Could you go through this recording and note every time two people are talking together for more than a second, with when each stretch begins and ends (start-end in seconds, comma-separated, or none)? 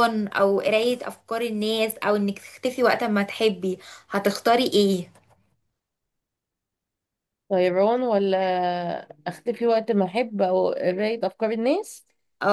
none